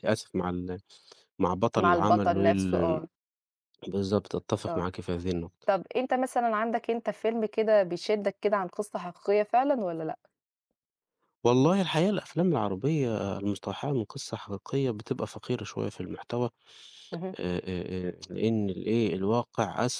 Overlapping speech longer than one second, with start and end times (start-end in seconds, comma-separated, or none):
1.8-3.0